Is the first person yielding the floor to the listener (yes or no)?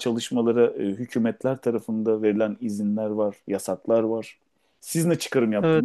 no